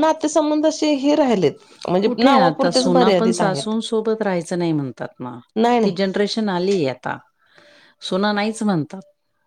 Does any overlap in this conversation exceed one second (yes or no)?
yes